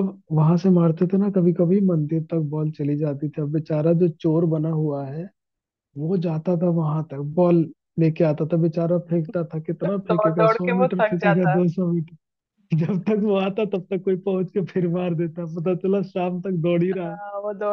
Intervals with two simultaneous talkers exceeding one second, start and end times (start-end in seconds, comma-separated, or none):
9.8-11.6